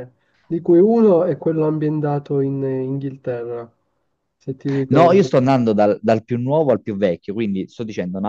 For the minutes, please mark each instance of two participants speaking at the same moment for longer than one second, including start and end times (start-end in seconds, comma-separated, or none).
none